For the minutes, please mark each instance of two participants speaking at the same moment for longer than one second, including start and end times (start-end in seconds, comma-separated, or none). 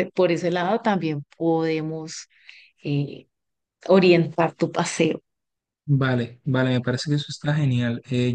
none